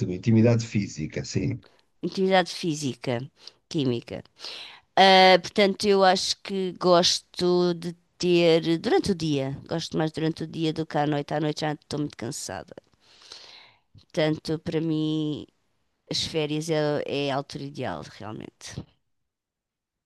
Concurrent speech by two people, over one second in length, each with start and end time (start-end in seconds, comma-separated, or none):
none